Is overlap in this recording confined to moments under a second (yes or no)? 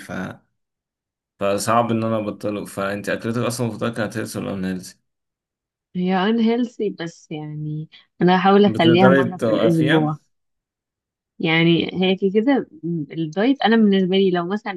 no